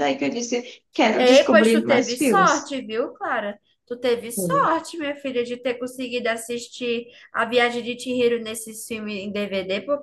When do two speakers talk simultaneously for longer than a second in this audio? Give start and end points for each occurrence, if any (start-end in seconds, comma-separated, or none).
1.2-2.8